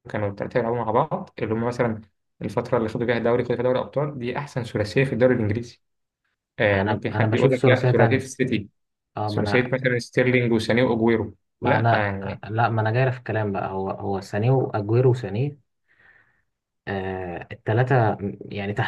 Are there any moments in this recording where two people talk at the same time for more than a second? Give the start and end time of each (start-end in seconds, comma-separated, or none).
6.7-8.3